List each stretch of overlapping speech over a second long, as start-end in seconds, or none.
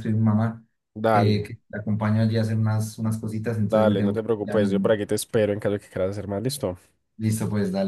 3.7-4.9